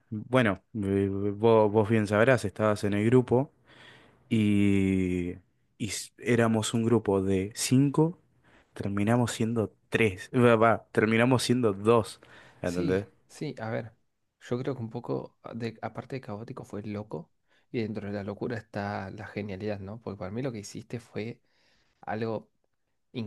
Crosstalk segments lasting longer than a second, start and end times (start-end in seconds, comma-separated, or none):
none